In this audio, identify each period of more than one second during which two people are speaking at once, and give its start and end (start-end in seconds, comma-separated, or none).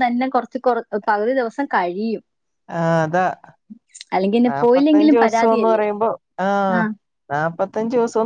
4.5-5.8